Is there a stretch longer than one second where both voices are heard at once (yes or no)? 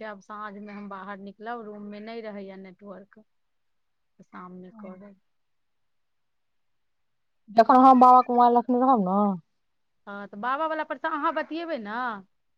no